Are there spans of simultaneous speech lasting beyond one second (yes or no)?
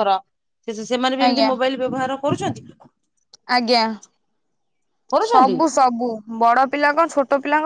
no